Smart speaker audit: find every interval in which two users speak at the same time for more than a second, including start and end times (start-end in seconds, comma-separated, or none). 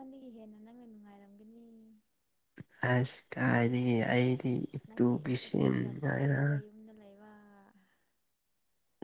none